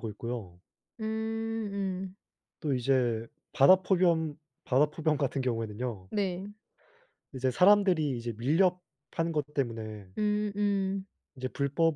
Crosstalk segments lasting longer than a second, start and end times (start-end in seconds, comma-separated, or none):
none